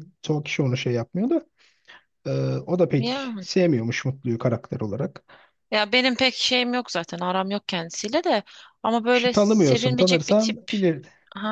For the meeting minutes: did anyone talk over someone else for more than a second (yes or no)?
yes